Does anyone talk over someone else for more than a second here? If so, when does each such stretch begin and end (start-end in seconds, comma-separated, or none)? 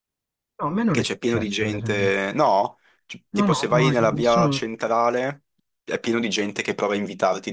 0.8-2.1, 3.3-4.7